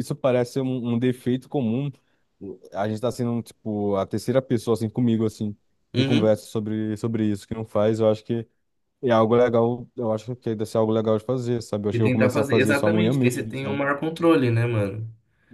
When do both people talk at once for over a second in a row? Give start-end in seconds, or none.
11.9-13.8